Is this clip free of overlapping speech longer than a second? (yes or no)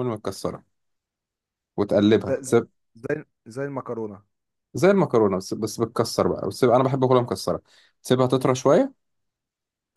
yes